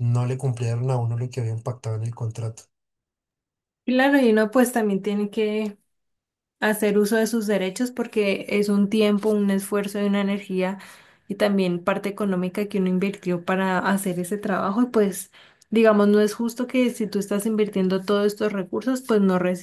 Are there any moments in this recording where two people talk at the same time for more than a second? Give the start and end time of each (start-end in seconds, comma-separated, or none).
none